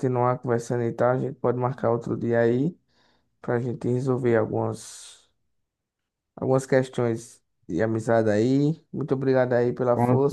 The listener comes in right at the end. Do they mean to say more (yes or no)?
yes